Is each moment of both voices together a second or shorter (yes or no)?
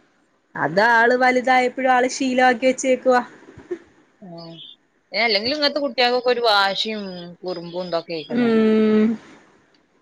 yes